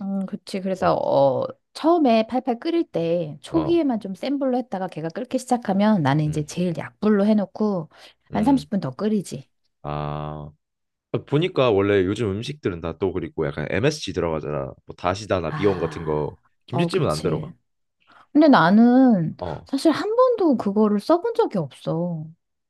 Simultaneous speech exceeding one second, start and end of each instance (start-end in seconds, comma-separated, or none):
15.5-17.5